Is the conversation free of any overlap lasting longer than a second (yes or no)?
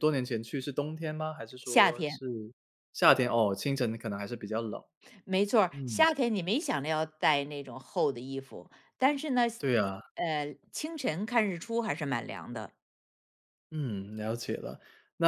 yes